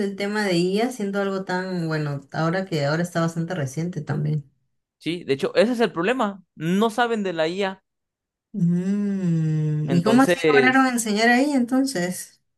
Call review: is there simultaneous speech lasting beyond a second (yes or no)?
yes